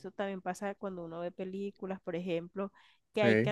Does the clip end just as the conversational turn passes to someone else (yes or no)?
no